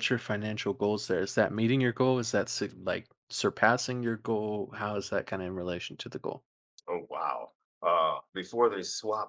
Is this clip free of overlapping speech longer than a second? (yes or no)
yes